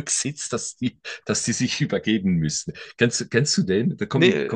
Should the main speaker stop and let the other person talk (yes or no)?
no